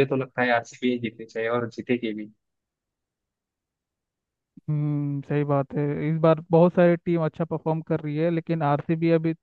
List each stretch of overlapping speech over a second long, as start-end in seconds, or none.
none